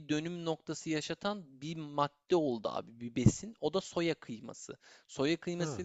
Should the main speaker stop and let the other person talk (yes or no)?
no